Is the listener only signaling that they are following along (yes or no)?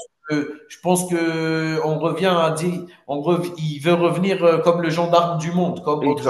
no